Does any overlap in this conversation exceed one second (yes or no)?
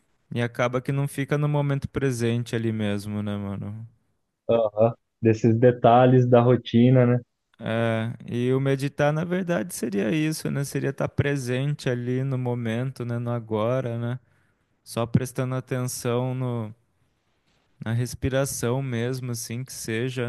no